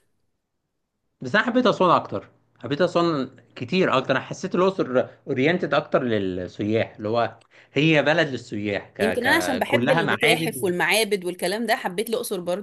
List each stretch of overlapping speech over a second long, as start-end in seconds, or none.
9.0-10.7